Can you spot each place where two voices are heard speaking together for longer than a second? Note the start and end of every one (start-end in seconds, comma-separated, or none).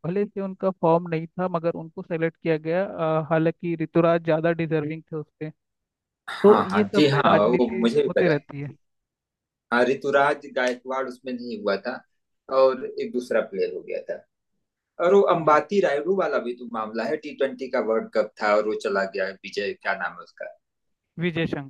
6.4-8.4